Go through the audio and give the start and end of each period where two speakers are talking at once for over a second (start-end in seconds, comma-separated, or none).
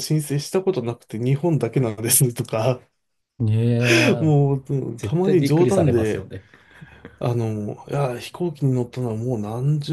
5.0-6.3